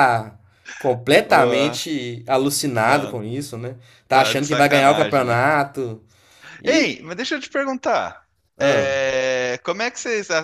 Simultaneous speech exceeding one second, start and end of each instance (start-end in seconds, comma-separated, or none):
4.1-5.4